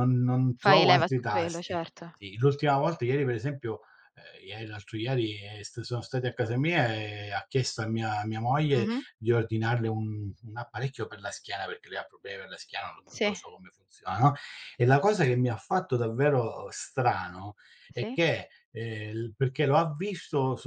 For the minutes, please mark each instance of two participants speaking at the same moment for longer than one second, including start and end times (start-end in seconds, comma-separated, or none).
0.6-2.0